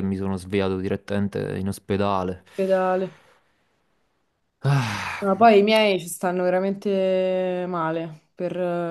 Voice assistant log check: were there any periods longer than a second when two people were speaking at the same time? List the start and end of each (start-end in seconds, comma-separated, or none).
none